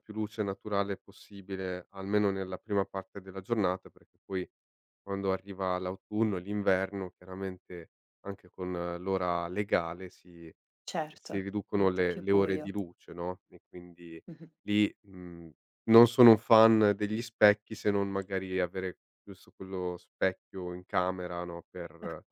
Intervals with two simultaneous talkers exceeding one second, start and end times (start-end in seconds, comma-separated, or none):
11.2-12.7